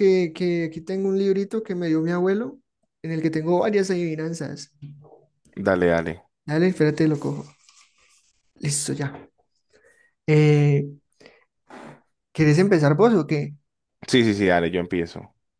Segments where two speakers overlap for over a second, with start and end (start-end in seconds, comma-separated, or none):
none